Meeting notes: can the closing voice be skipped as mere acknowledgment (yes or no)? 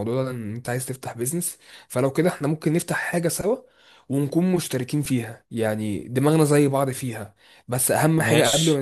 yes